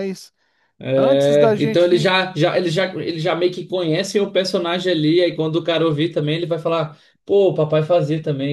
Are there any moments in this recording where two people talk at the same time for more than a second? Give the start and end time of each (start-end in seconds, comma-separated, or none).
0.9-2.1